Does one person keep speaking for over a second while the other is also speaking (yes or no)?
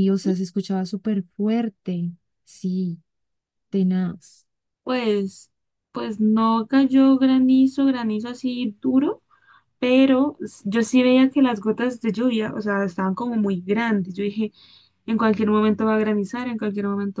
no